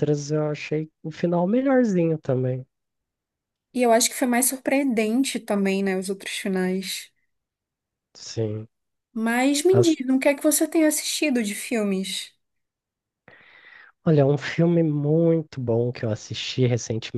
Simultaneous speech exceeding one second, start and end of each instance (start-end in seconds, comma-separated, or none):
none